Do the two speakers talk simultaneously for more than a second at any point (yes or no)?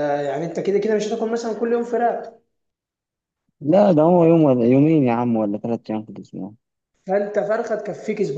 no